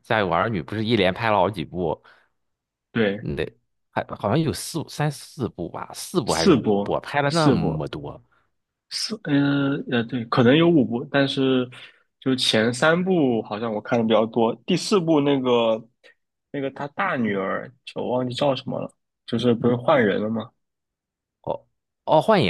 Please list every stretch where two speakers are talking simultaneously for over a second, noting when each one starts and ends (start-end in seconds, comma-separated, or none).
6.2-7.9